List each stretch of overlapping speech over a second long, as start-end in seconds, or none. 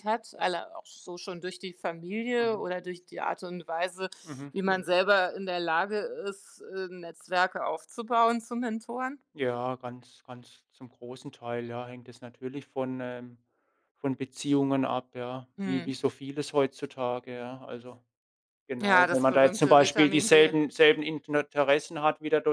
18.8-20.5